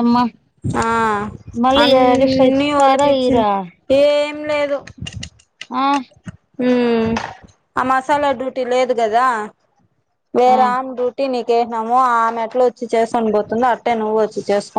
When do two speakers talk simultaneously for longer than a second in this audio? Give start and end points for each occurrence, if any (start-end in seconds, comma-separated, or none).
1.8-3.5